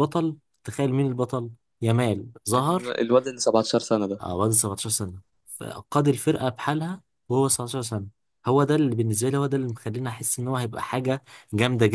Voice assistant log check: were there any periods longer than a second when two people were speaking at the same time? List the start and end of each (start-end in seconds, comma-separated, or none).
none